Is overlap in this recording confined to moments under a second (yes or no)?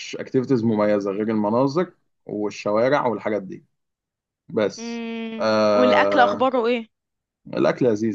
no